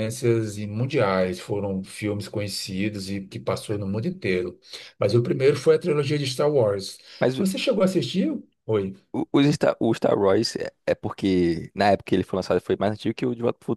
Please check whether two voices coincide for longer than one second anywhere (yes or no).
no